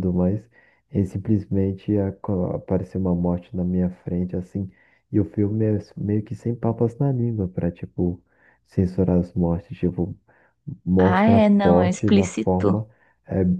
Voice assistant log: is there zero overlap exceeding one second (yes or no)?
no